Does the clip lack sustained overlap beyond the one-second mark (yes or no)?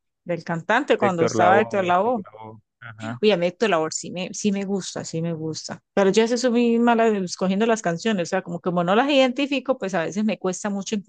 no